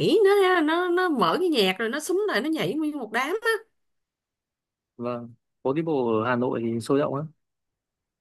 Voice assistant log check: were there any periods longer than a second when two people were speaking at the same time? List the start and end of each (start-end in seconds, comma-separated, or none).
none